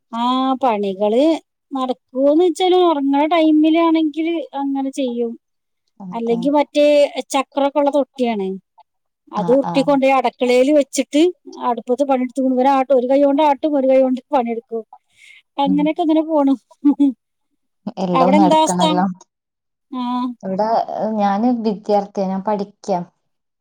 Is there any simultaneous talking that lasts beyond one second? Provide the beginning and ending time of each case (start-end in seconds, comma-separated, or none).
none